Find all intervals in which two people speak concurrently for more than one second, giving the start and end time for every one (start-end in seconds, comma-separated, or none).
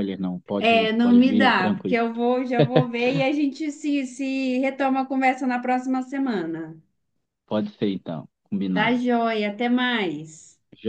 0.6-2.0